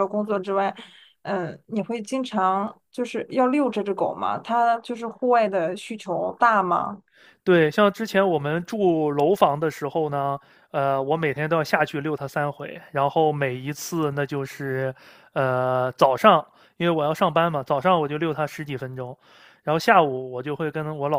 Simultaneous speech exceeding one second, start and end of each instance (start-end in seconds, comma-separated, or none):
none